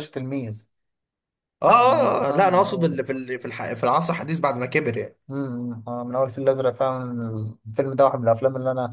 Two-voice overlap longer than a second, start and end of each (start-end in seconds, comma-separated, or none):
1.7-3.0